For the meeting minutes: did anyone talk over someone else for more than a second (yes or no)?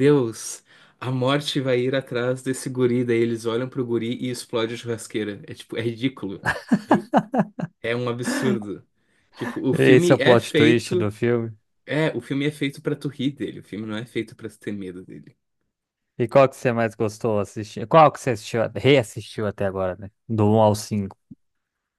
yes